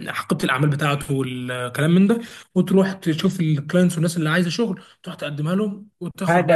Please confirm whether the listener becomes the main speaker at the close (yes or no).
yes